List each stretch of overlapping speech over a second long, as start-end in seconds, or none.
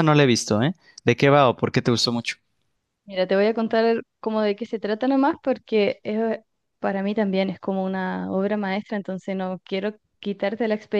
none